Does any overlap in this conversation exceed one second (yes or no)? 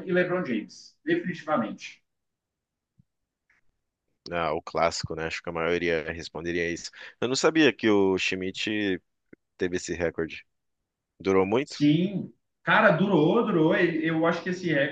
no